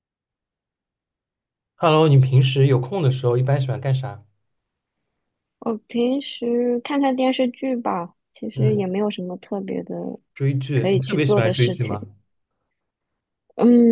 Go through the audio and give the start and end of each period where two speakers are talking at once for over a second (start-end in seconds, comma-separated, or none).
10.7-12.0